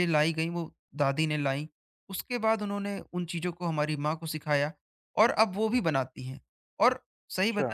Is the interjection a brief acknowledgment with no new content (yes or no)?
yes